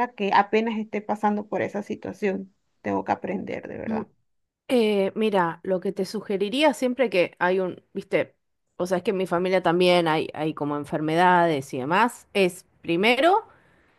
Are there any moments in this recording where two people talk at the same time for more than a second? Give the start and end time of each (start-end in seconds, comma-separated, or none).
none